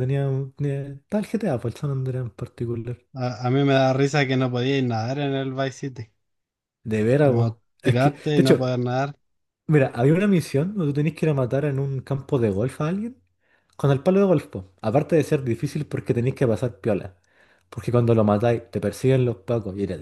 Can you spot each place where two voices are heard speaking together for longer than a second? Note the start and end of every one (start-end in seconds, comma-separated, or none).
7.2-8.7